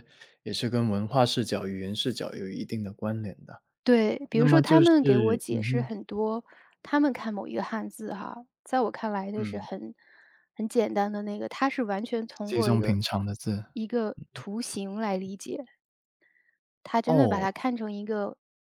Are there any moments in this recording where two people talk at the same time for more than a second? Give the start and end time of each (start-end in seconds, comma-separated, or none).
4.3-5.9